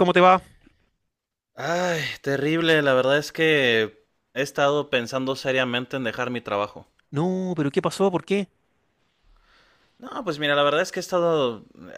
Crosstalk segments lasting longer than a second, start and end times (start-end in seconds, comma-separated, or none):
none